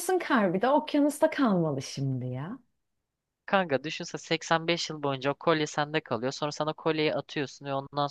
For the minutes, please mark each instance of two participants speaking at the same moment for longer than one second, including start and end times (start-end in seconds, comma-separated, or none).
none